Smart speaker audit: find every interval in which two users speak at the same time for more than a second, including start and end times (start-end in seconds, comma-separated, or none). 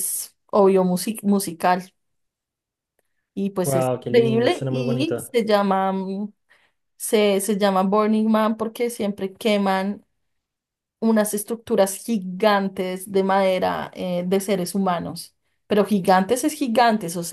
3.6-5.3